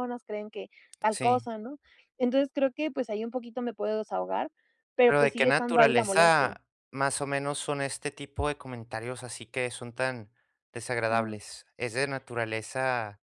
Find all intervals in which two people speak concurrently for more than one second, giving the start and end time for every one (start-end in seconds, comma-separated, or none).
5.0-6.5